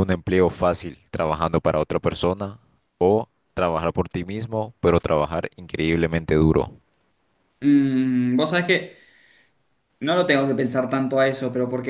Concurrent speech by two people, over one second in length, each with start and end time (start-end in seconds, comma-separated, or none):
none